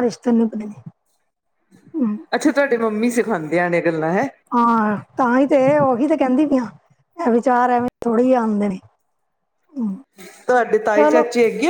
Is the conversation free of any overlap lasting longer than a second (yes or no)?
yes